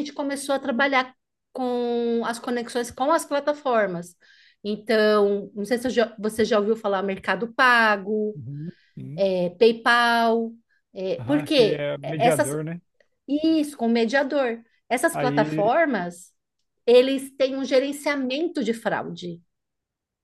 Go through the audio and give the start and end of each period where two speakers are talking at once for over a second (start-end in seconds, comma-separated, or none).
11.2-12.6